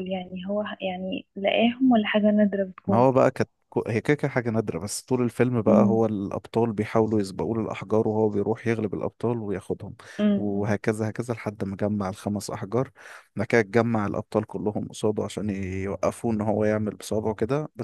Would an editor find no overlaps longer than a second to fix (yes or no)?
yes